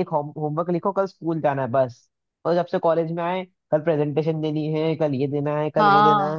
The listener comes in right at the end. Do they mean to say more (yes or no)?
yes